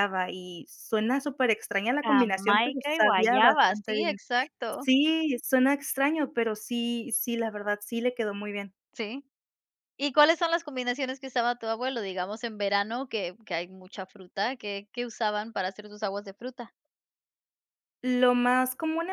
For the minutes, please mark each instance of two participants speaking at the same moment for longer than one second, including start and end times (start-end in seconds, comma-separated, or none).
2.0-4.2